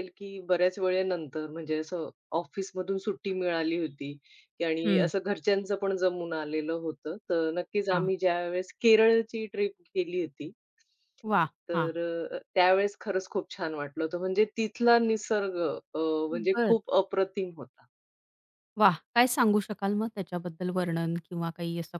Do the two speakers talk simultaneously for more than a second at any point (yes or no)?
no